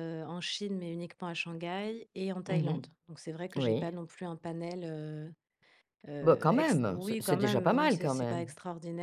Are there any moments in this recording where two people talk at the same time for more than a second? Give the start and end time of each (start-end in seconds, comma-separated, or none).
6.2-8.5